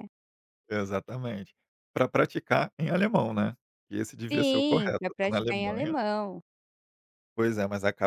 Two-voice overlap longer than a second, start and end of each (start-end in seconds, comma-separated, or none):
4.3-5.9